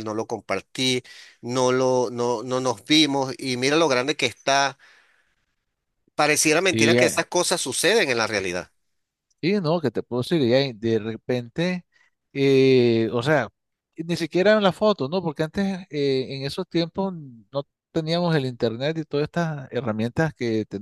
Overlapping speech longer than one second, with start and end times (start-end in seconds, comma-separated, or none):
none